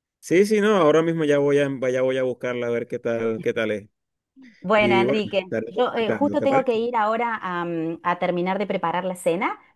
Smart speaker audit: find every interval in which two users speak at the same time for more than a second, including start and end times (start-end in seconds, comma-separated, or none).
4.8-6.9